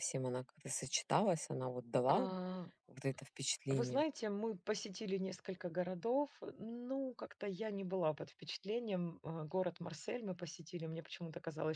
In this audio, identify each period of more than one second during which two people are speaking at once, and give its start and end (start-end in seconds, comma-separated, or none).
none